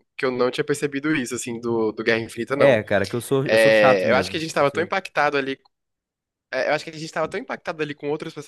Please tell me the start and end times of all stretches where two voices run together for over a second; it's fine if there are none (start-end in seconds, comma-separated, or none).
3.5-4.9